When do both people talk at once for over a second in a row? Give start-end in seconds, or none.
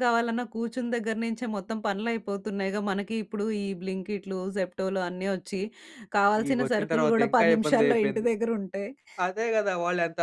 6.5-8.3